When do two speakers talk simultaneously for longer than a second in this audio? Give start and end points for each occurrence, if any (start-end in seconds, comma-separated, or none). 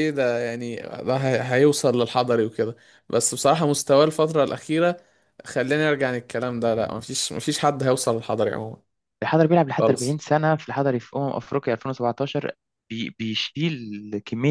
none